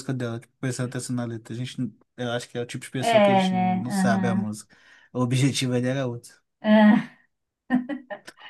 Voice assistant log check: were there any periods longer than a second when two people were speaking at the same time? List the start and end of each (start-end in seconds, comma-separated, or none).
3.0-4.5